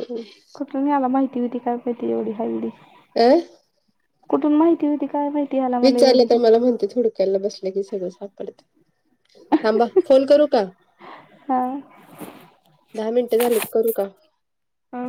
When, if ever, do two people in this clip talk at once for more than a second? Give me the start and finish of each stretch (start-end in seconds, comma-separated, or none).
none